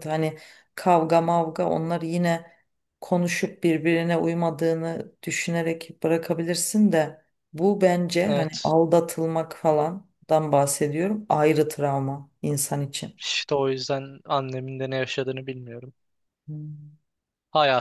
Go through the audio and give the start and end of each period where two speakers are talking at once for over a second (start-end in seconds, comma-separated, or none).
none